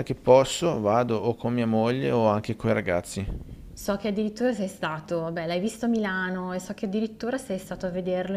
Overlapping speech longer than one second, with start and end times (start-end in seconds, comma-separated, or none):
none